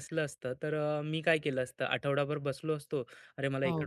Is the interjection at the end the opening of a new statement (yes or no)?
no